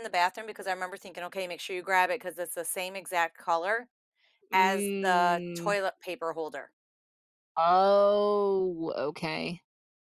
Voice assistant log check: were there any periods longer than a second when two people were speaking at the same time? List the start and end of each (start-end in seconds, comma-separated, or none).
4.5-5.8